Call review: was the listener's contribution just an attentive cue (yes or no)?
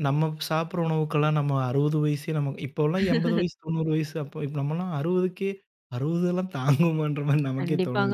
no